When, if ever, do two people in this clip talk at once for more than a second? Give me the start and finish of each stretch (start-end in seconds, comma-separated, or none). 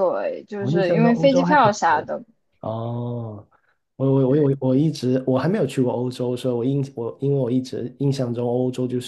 0.6-2.1